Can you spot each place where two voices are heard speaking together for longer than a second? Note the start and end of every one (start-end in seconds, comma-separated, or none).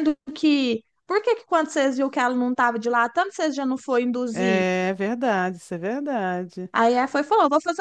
none